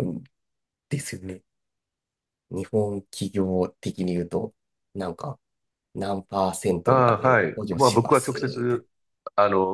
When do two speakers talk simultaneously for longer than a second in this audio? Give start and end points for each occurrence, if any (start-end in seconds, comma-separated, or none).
6.8-8.8